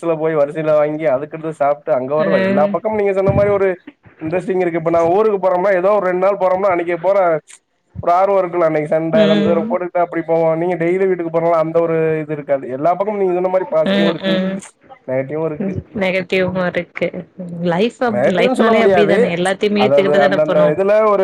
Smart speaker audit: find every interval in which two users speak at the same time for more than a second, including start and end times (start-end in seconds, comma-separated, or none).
none